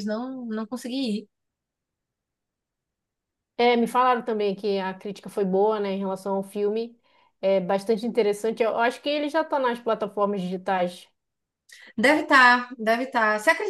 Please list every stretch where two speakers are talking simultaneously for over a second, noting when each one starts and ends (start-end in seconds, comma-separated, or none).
none